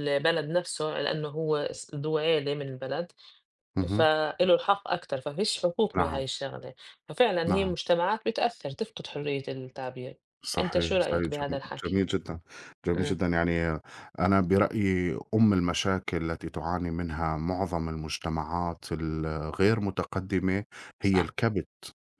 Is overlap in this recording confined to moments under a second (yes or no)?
no